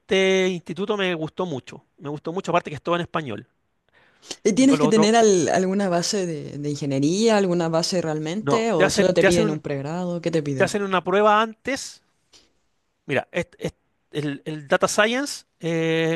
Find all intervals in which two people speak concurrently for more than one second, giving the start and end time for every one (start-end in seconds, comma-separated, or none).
8.4-9.6